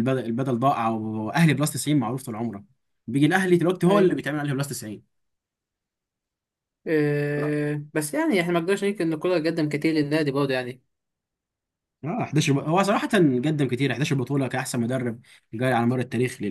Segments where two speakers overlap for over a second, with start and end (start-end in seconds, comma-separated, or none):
none